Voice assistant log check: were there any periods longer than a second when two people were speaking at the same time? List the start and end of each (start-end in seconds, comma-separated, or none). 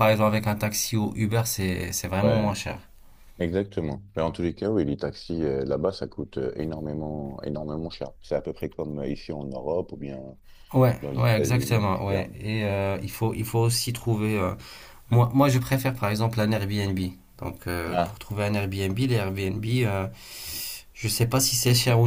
11.0-12.2